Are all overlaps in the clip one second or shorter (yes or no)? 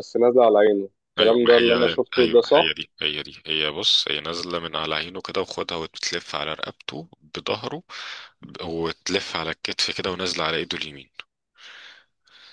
no